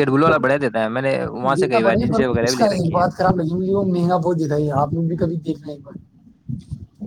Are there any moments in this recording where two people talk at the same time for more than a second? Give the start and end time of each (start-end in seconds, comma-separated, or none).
1.6-3.0